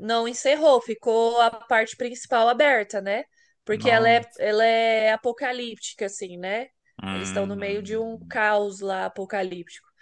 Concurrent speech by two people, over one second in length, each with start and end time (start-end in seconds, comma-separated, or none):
7.1-8.4